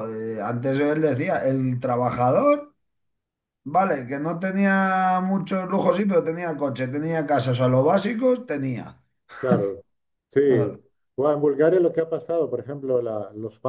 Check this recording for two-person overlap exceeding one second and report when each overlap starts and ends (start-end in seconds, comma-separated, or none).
none